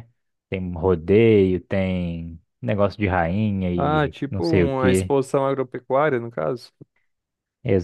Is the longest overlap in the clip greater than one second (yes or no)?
yes